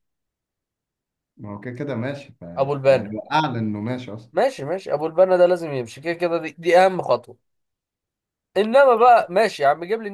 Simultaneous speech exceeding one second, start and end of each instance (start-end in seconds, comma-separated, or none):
none